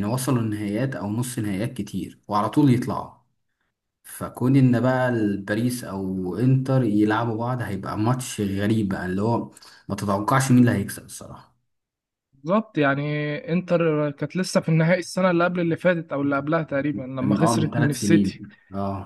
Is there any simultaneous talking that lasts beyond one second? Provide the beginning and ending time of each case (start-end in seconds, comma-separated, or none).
17.2-18.4